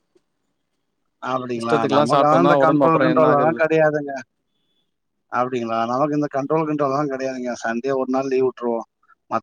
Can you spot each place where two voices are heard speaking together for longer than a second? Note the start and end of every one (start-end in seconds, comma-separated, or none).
1.6-3.6